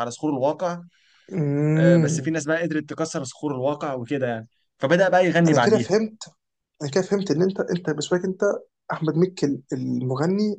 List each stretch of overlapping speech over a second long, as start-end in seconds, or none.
none